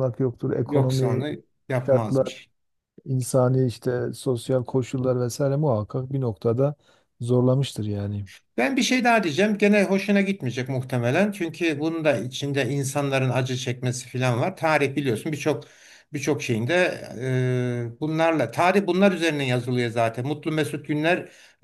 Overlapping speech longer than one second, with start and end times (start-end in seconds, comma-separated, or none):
none